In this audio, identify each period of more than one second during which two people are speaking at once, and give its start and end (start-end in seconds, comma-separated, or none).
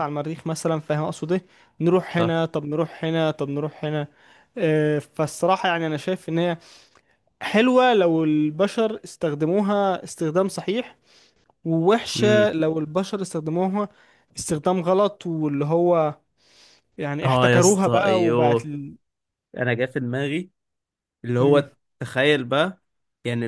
17.2-18.7